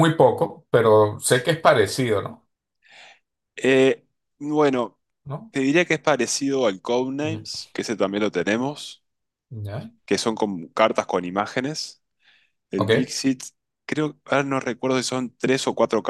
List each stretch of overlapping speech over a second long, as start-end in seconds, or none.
none